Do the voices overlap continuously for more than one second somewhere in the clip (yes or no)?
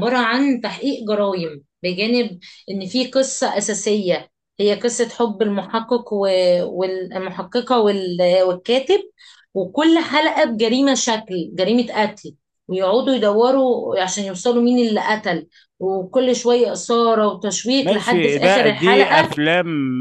yes